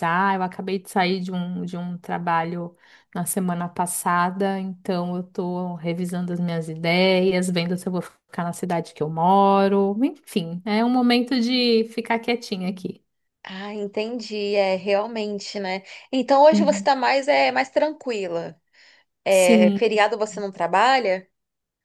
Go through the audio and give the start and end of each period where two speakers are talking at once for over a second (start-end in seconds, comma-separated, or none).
none